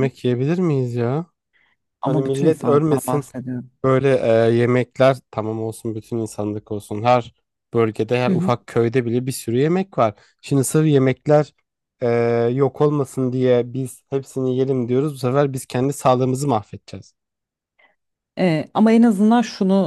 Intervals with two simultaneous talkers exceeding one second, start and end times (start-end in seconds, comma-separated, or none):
2.0-3.3